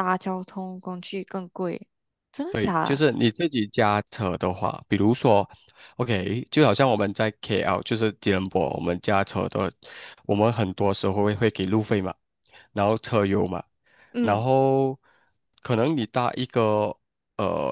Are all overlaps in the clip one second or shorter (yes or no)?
yes